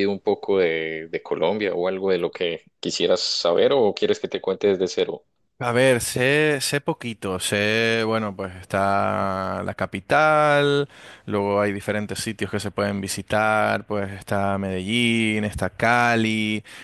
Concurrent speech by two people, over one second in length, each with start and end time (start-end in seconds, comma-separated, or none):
none